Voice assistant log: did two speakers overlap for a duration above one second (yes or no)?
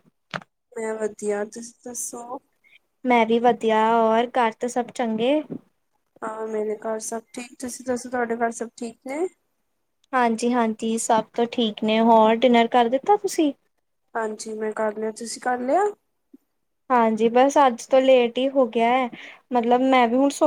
no